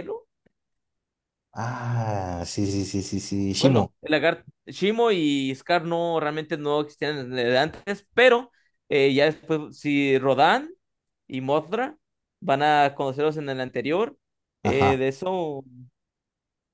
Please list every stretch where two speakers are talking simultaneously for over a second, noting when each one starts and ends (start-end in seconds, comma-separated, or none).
none